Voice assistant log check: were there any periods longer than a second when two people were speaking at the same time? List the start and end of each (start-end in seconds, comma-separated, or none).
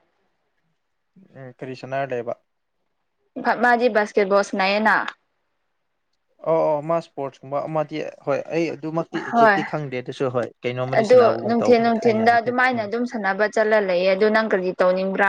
11.0-12.9